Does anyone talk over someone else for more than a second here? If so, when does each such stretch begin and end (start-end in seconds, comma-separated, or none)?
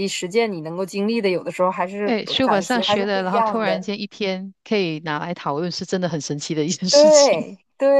2.0-3.9